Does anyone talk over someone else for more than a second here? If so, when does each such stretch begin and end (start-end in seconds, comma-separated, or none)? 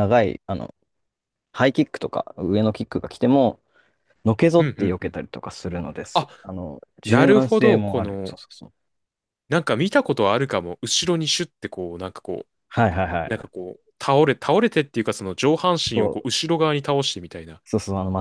7.0-8.3